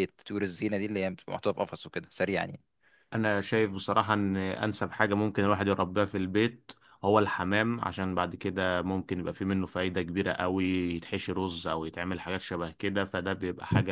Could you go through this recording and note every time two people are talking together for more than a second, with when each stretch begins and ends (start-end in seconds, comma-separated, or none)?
none